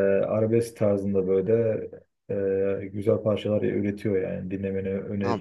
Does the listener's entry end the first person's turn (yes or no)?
yes